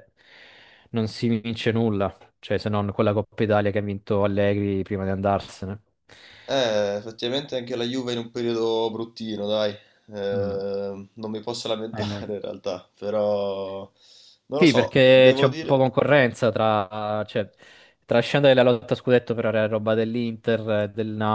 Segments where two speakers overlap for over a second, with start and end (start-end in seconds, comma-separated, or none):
14.6-15.8